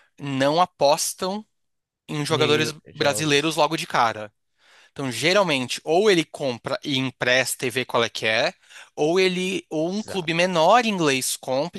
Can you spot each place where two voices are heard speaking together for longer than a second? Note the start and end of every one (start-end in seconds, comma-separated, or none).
2.3-3.6